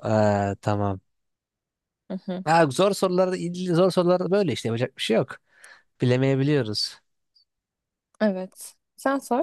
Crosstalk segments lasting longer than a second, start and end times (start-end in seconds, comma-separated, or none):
none